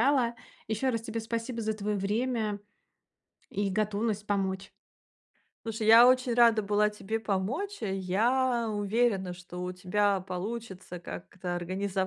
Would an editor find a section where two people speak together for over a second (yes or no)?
no